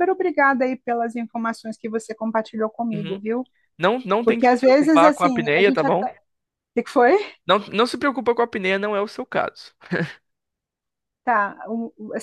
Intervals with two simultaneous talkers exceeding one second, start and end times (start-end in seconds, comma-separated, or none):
4.2-6.1